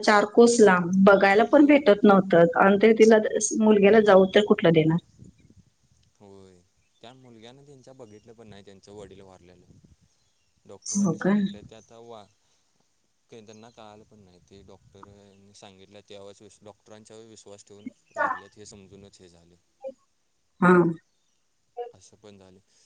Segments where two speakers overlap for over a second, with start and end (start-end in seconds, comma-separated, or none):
none